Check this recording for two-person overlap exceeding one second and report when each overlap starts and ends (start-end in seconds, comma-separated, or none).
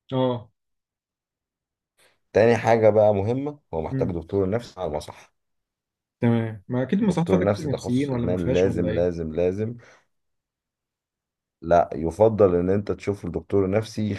7.0-9.1